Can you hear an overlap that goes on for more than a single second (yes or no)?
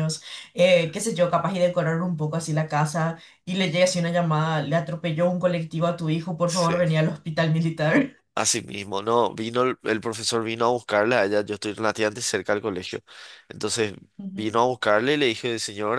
no